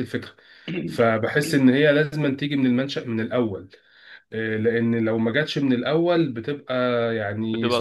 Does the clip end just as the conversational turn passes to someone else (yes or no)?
yes